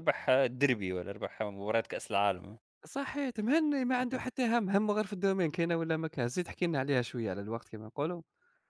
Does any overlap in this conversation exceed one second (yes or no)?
no